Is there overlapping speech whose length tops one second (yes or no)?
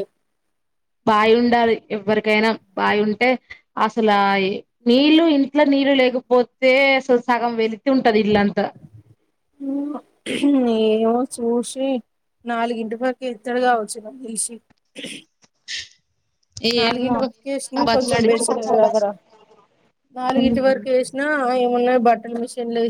yes